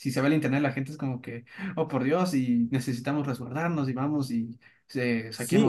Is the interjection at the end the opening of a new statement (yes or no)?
yes